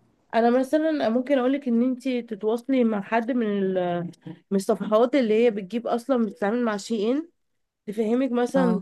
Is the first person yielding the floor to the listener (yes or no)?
no